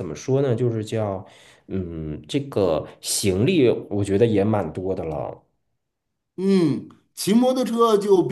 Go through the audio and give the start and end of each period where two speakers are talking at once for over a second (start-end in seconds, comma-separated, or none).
none